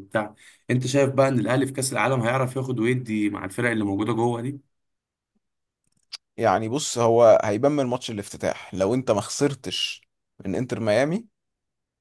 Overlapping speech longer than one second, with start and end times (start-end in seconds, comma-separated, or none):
none